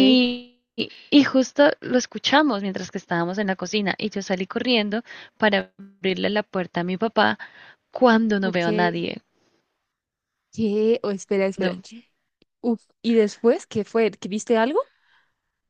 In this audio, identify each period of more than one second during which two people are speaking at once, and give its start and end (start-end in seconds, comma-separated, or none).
none